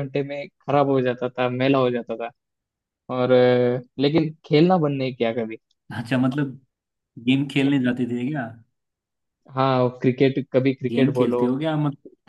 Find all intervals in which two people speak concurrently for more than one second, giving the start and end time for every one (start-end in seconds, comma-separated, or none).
none